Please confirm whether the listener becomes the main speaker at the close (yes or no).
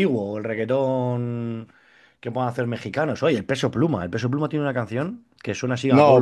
no